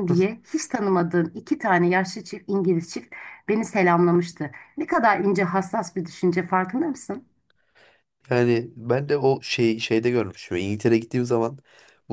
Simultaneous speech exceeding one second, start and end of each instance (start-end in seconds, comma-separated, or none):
none